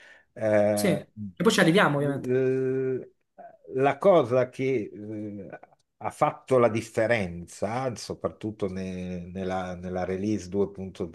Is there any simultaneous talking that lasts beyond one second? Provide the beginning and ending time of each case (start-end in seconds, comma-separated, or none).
none